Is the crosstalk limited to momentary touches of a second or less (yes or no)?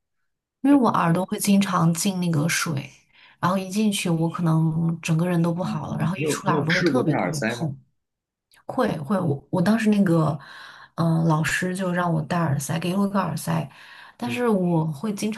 no